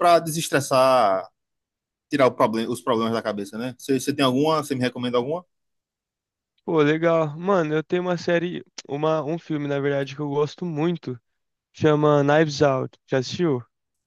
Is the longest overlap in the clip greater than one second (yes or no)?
no